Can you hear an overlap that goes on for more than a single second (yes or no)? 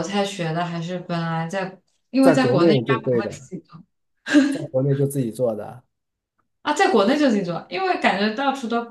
yes